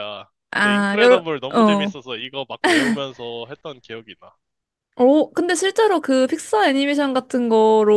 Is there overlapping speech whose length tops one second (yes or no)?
yes